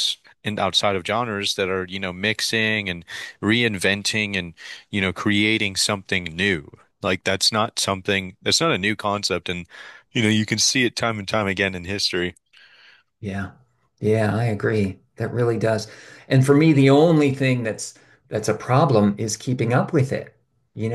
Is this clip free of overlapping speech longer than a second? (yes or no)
yes